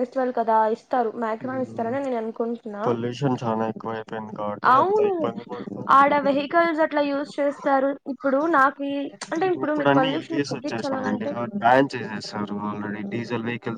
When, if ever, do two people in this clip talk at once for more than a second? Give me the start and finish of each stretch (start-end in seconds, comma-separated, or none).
9.9-11.3